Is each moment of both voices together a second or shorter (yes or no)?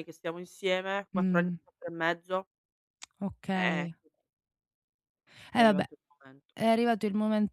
yes